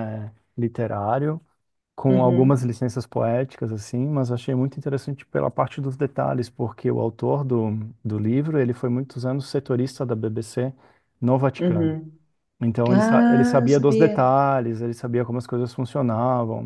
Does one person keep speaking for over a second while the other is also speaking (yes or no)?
yes